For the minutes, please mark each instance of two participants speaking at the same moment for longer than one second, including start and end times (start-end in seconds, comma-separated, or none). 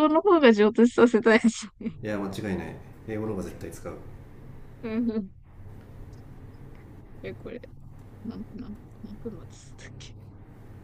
none